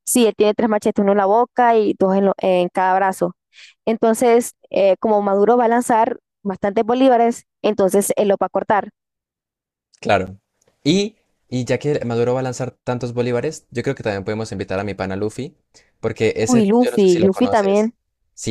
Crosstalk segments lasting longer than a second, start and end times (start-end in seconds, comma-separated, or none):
16.4-17.9